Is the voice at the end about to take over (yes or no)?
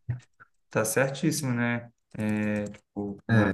no